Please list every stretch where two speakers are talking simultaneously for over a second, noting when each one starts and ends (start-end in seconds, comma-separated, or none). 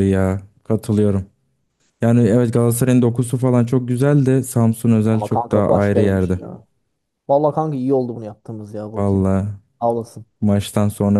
5.1-6.4